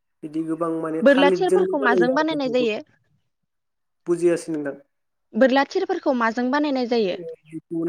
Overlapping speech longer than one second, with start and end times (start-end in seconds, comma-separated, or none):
1.1-2.7